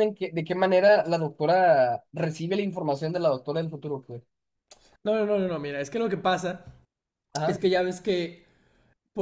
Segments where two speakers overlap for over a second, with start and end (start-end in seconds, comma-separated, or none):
none